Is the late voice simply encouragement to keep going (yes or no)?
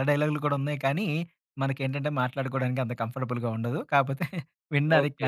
no